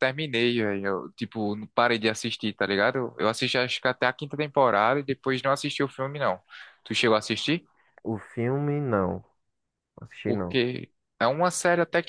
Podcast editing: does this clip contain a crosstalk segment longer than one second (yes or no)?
no